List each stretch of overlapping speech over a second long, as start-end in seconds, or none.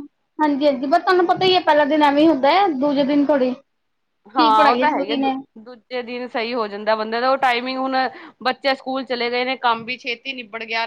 none